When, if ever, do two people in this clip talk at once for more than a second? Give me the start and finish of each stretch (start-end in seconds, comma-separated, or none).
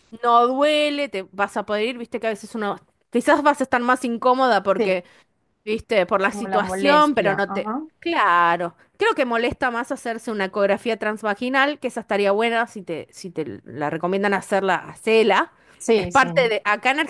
6.3-7.8